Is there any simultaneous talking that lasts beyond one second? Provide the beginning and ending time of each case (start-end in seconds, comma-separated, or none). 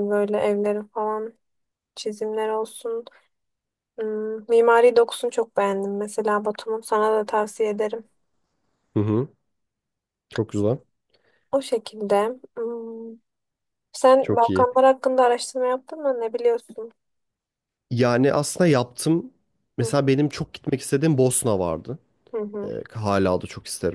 none